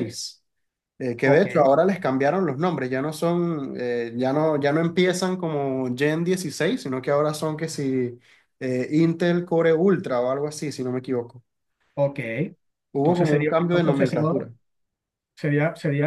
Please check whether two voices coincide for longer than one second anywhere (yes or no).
yes